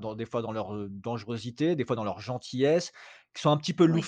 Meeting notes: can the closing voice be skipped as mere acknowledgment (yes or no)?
yes